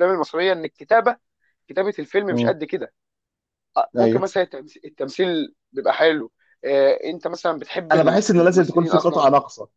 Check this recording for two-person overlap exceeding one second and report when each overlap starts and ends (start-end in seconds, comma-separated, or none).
7.9-9.3